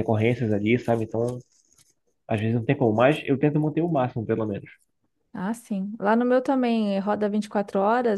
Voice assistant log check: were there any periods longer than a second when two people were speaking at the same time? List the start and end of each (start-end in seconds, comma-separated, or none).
none